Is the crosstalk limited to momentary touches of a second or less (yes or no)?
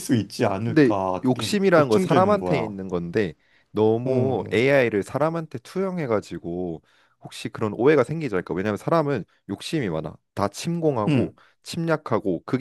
no